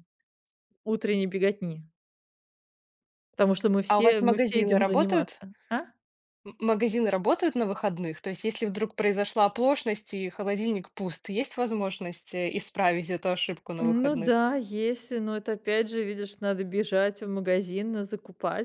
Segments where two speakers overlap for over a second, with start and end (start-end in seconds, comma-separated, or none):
3.9-5.4